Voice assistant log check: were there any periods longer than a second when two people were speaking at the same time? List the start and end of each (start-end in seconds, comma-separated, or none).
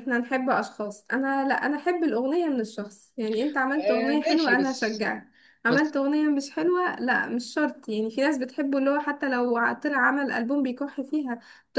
3.7-5.1